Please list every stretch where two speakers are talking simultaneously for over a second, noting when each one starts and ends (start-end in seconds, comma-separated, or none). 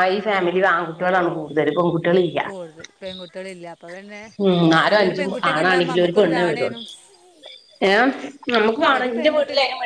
4.9-6.8